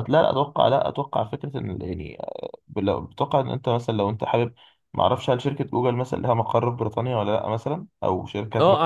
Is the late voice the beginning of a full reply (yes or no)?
yes